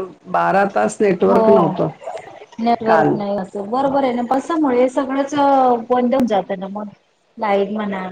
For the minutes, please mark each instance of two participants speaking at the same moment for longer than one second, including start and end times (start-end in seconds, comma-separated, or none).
none